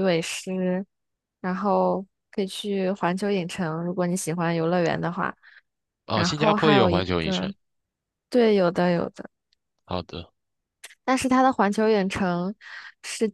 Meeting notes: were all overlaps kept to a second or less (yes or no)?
no